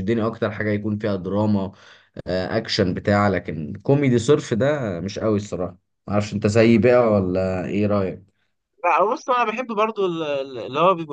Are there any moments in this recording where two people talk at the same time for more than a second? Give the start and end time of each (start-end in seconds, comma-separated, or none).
none